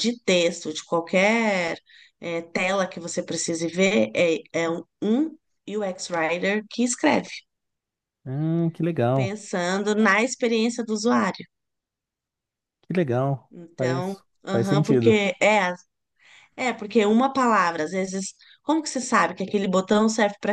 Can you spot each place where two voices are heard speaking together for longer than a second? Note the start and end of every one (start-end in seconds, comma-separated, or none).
13.5-15.2